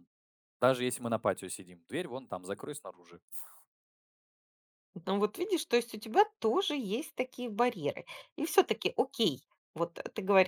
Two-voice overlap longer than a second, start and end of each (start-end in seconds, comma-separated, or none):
none